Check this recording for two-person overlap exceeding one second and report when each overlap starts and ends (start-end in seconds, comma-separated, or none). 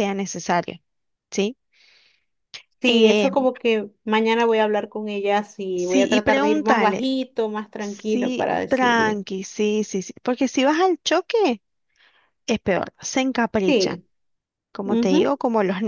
5.8-7.1, 7.8-9.2